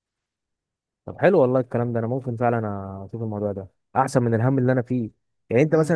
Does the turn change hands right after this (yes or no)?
no